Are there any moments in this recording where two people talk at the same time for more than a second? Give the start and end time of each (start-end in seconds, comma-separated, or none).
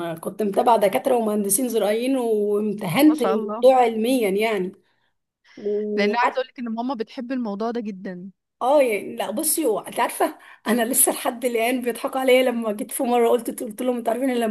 none